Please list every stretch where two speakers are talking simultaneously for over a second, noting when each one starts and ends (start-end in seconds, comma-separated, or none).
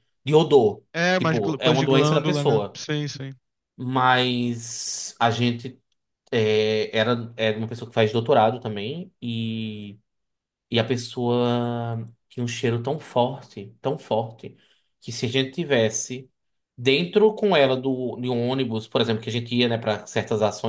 0.9-2.8